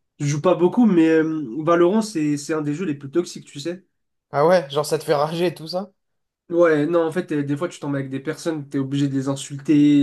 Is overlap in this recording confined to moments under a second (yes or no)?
yes